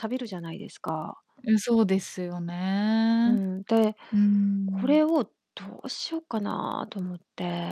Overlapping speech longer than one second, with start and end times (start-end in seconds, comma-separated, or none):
none